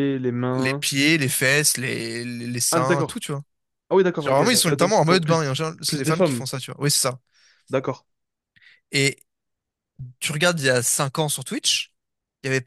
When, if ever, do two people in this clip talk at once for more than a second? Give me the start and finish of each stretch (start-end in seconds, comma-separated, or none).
4.2-6.5